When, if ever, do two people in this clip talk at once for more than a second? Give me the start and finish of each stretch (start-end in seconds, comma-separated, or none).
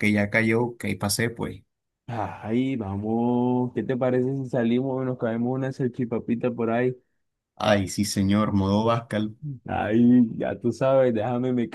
none